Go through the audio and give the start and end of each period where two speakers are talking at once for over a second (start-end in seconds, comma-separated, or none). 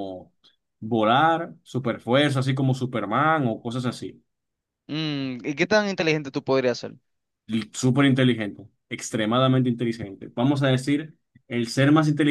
none